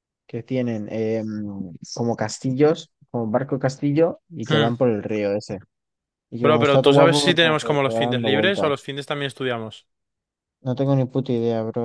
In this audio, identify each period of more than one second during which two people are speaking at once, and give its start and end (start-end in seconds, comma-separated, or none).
6.4-8.7